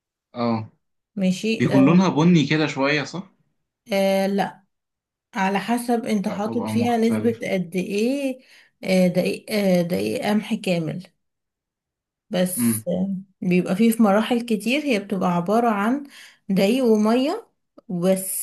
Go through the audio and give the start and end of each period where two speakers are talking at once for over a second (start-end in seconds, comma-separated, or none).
6.2-7.5